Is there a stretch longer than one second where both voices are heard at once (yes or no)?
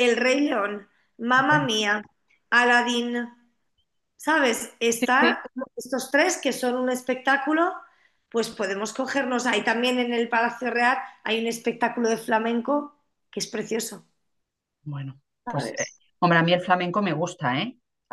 no